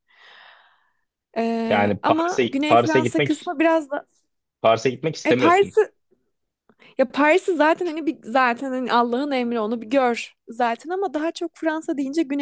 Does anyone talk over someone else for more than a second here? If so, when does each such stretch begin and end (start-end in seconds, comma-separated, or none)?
1.6-3.5